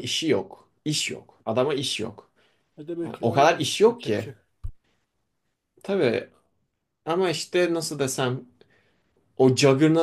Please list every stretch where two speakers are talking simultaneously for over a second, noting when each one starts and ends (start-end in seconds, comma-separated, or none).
3.0-4.3